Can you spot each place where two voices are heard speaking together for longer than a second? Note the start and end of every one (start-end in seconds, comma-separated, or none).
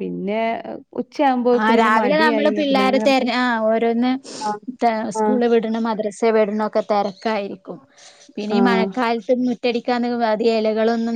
1.6-3.3